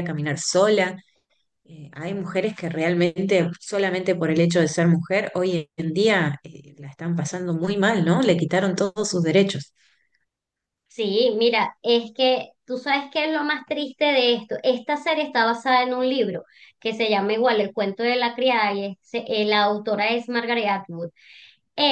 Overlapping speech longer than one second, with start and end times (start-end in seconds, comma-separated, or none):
none